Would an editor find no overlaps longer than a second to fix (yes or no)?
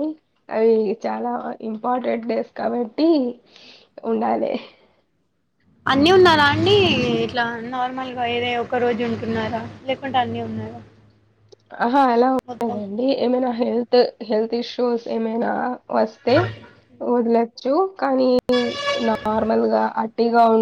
yes